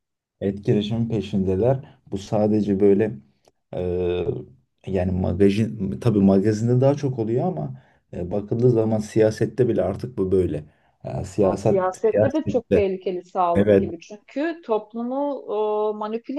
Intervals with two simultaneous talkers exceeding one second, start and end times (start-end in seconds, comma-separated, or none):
11.4-12.9